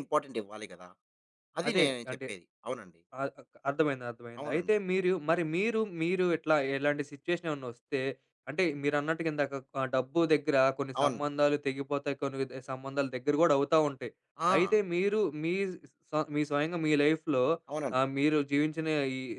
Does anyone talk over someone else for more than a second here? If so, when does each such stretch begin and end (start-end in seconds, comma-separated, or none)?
none